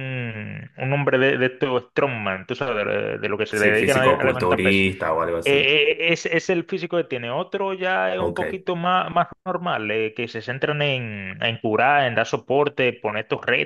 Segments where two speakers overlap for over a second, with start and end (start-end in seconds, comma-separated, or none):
3.5-4.8